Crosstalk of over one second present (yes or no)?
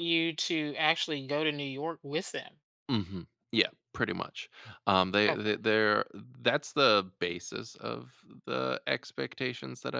no